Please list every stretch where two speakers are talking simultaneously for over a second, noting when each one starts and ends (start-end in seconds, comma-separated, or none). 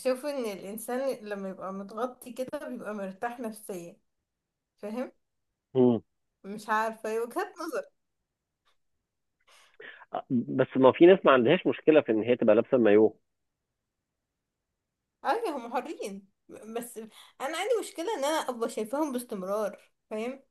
none